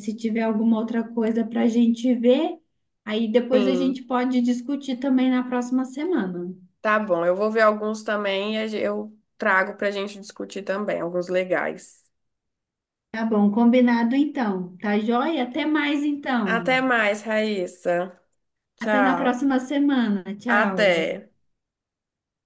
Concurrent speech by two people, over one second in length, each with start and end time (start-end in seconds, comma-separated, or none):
none